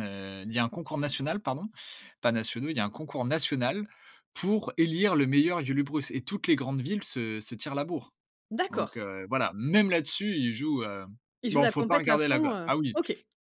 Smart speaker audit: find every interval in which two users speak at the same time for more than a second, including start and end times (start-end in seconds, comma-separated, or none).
11.5-13.0